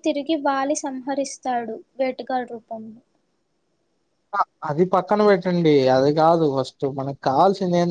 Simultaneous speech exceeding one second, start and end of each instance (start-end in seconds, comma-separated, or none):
none